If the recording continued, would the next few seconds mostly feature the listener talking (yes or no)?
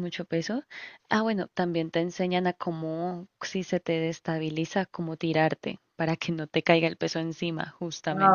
yes